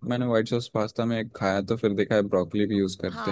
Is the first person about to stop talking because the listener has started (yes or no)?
yes